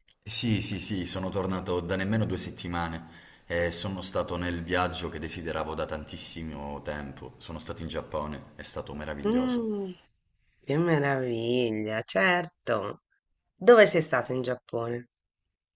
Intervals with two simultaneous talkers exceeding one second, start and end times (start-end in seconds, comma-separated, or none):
none